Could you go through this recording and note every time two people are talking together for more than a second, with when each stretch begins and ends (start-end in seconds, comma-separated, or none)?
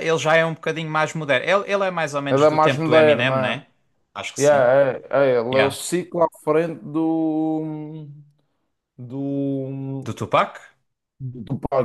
2.3-3.6